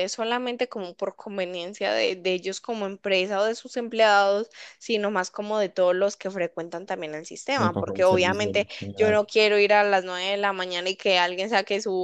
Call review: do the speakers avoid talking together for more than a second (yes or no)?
no